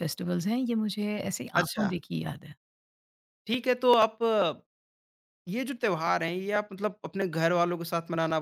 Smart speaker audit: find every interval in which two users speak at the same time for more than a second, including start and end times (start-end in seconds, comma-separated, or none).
none